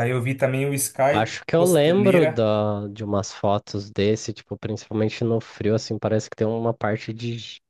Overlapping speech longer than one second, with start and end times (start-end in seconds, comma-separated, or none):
1.1-2.5